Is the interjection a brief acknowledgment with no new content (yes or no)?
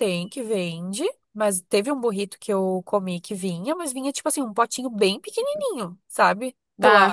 no